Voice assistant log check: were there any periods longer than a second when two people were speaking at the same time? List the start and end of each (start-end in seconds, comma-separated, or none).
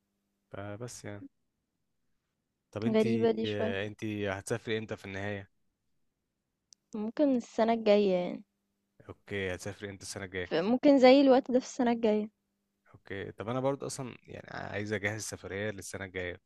none